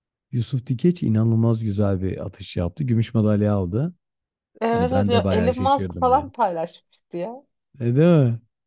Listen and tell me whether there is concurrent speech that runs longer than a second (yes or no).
yes